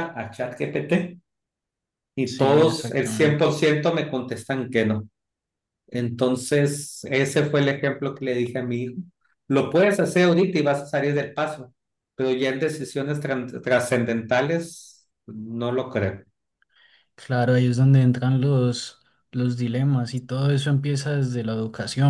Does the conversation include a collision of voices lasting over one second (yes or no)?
yes